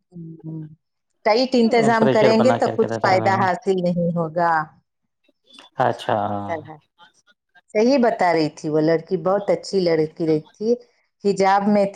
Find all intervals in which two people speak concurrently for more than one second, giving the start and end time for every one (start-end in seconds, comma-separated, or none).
1.5-3.4